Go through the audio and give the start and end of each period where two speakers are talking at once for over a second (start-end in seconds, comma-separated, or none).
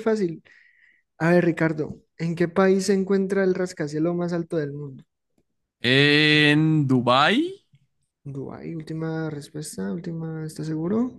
none